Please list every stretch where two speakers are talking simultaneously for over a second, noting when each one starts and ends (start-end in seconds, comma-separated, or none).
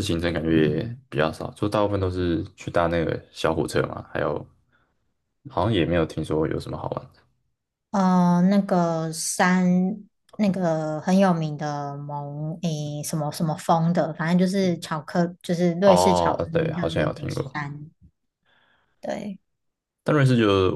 15.8-17.4